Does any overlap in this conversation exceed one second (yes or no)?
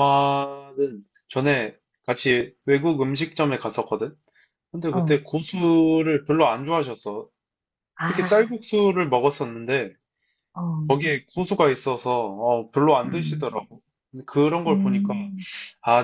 no